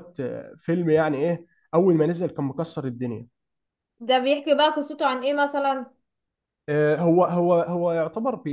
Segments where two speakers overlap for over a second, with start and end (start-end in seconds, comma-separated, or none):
none